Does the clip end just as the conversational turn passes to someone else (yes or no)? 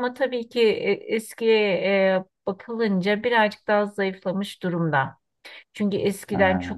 no